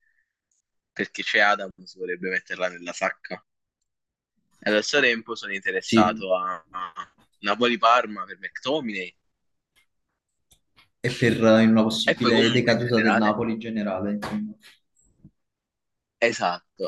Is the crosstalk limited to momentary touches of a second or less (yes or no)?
no